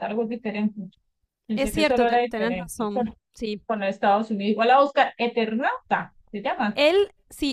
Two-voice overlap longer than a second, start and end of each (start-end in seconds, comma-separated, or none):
1.6-3.1